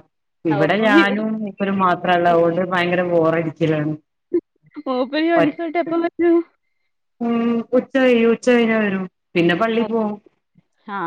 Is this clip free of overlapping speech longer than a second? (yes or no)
yes